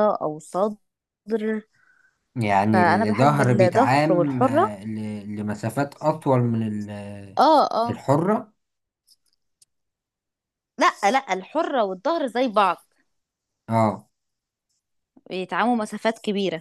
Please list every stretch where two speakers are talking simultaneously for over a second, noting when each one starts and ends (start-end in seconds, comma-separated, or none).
2.7-4.7